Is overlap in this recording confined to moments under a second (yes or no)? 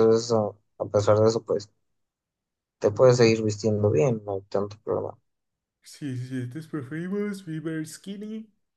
yes